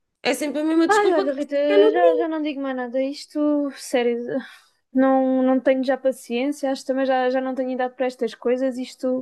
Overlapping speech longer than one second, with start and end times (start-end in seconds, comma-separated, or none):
0.8-2.3